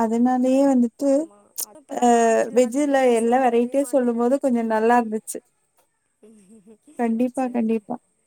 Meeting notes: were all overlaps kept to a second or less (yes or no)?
no